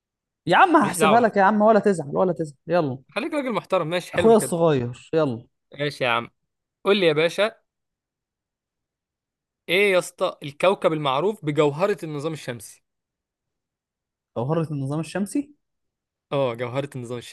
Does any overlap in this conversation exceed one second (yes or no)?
no